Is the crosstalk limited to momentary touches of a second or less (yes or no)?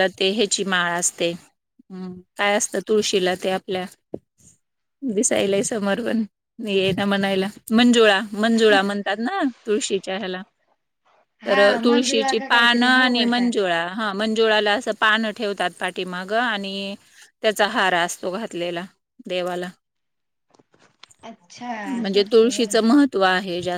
no